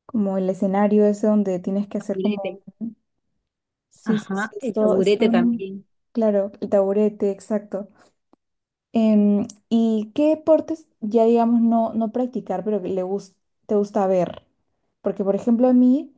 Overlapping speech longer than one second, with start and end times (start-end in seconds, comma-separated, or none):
4.0-5.7